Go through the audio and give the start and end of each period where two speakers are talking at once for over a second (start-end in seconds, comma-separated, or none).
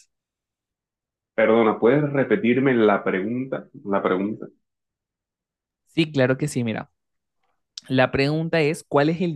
none